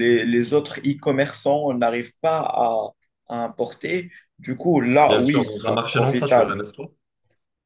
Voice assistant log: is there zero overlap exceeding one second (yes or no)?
no